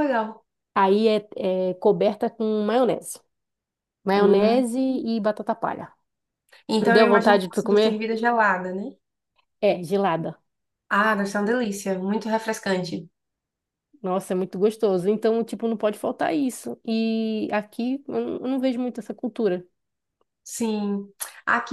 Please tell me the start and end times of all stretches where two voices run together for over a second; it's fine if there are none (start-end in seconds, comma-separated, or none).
6.8-8.0